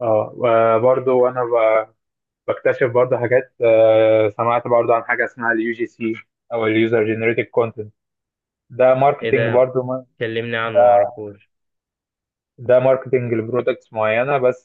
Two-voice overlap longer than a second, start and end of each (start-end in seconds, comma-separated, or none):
none